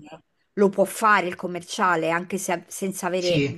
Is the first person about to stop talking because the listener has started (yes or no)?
yes